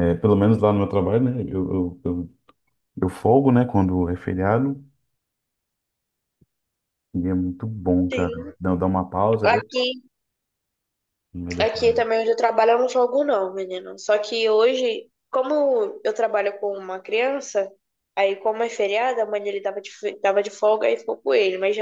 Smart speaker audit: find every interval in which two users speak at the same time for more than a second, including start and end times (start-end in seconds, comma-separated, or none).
none